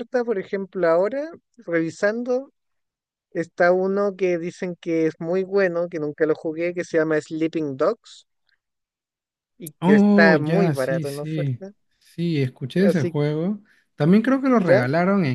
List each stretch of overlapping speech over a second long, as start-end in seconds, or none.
9.8-11.6